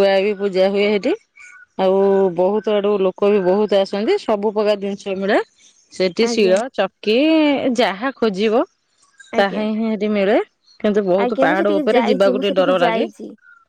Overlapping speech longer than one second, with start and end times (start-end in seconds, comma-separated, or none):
11.2-13.1